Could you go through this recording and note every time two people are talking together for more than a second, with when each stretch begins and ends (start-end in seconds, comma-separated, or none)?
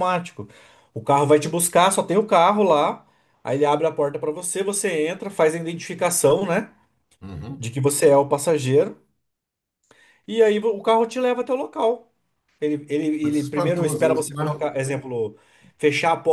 13.2-14.4